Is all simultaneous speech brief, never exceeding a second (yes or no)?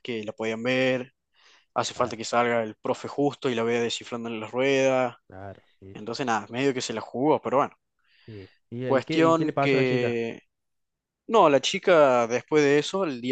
no